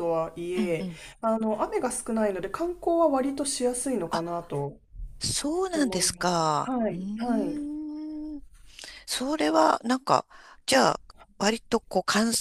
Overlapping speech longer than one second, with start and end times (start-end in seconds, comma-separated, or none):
5.7-7.7